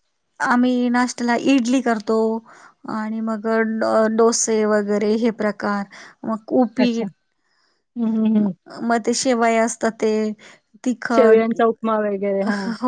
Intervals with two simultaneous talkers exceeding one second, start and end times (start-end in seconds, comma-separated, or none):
none